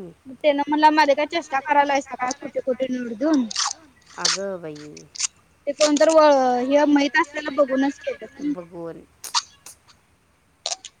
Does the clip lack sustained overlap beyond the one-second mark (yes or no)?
no